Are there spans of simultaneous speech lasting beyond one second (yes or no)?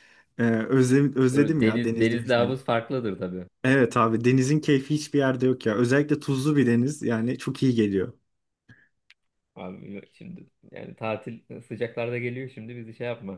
yes